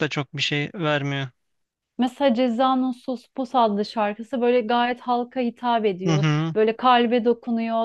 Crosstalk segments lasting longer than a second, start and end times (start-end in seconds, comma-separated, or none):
none